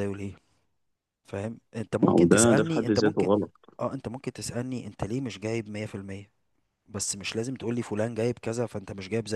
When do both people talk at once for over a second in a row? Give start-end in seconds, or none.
2.0-3.3